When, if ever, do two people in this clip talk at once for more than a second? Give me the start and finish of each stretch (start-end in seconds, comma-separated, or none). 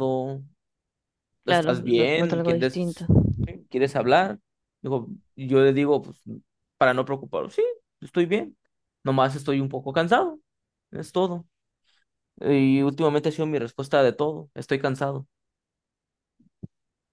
1.4-3.0